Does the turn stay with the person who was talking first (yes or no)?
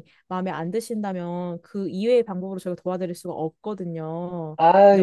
no